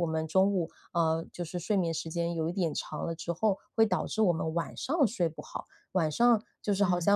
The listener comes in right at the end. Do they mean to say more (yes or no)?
no